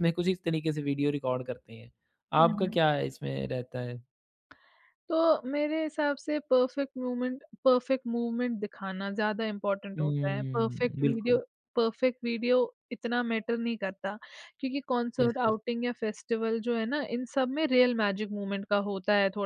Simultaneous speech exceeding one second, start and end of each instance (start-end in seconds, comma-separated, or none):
10.0-11.4